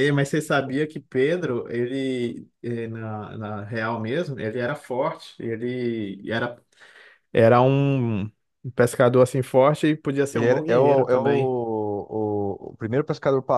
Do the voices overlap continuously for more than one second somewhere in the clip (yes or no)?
yes